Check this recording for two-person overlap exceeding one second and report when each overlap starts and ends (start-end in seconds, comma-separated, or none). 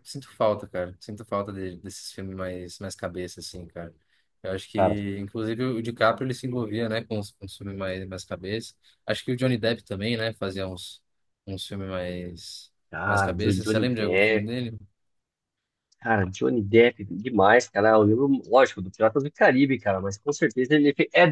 12.9-14.5